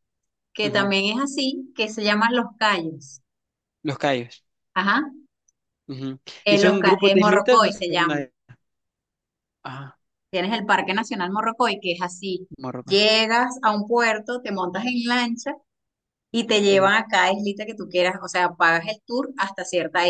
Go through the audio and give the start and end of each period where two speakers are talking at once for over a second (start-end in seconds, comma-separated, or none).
6.4-8.2